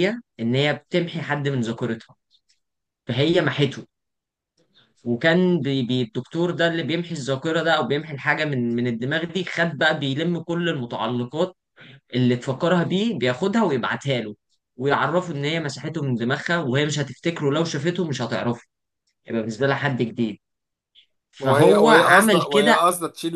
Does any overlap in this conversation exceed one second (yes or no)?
yes